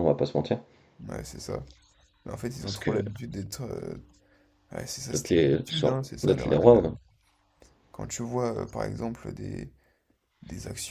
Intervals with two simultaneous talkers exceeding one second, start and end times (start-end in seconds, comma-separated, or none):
5.1-6.9